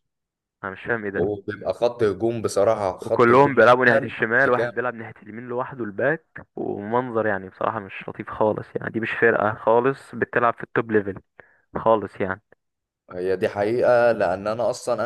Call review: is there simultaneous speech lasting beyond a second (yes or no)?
yes